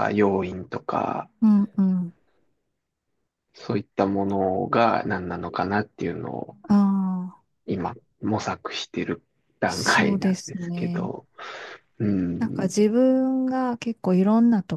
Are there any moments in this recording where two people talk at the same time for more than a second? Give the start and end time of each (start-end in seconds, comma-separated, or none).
9.6-11.1